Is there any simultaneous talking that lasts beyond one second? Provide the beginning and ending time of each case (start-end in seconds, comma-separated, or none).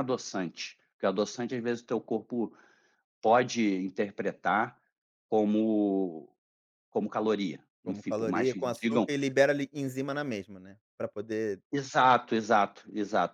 7.8-9.1